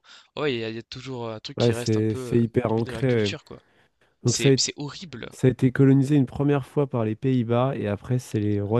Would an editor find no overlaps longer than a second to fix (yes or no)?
no